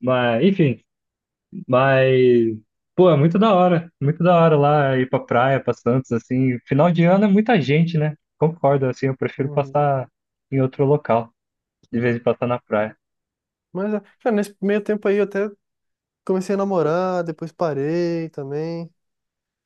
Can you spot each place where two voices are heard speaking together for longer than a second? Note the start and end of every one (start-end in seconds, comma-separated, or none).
none